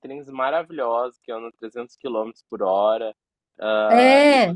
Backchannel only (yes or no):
yes